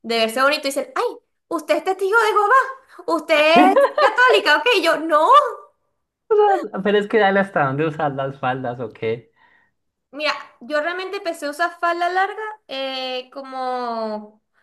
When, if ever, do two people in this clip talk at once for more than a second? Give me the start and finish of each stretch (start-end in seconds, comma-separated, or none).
none